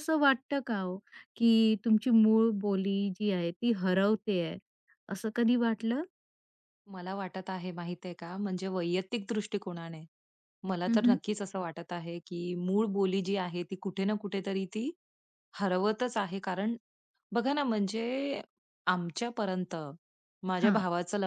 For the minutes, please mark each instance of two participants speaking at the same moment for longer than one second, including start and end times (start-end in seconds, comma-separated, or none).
none